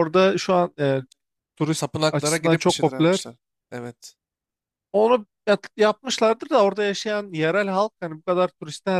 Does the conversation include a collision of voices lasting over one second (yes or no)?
yes